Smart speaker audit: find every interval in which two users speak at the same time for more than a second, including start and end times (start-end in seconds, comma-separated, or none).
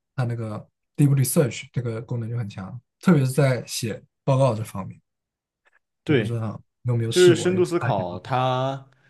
7.1-8.4